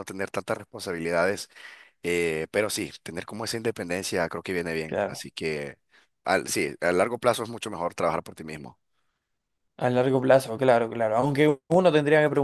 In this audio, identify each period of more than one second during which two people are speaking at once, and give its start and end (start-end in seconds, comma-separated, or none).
none